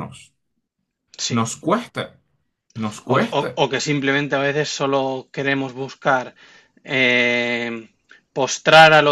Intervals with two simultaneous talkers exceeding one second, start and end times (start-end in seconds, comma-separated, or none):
none